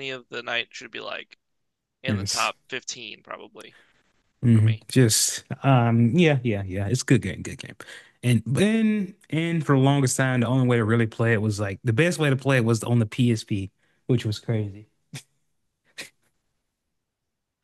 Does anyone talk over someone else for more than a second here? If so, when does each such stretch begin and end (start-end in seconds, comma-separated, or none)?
none